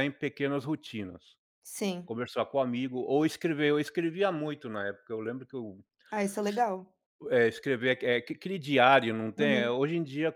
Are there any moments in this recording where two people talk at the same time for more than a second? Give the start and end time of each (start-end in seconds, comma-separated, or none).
none